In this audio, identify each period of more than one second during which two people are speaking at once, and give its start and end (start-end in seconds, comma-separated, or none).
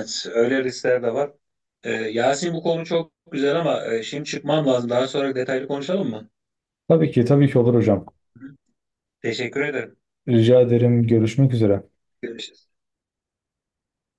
none